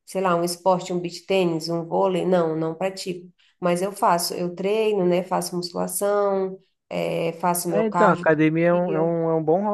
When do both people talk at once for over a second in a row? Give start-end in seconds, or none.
7.7-9.2